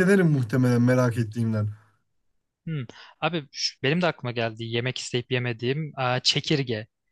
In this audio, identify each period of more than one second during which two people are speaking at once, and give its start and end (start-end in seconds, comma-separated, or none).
none